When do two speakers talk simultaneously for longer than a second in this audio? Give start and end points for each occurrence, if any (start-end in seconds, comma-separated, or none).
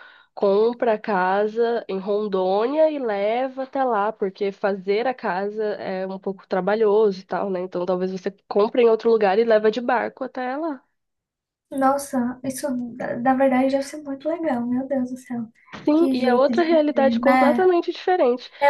16.0-17.7